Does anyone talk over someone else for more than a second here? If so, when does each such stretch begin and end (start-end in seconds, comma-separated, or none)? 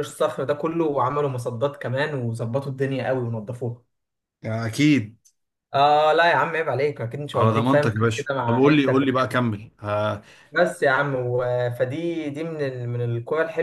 7.3-9.4